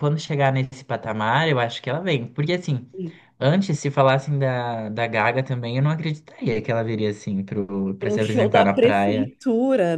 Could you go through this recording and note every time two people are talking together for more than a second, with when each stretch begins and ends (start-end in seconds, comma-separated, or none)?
8.0-9.3